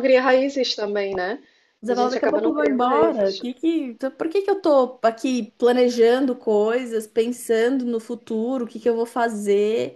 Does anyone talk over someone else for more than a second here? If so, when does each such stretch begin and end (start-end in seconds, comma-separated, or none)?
1.9-3.5